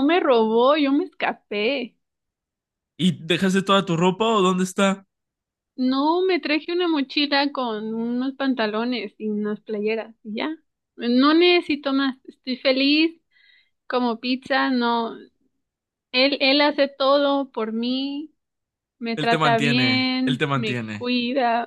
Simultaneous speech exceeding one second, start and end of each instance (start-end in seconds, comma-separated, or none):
19.1-21.1